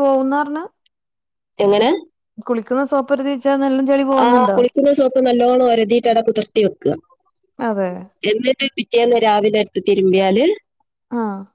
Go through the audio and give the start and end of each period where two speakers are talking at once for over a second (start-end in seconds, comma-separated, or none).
none